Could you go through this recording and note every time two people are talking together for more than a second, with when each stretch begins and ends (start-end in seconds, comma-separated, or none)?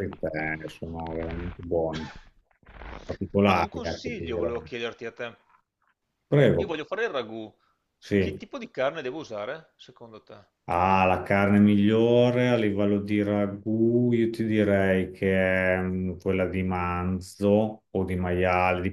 3.4-4.7